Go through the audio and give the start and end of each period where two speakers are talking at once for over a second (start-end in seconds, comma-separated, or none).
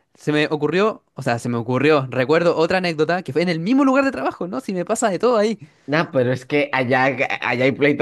none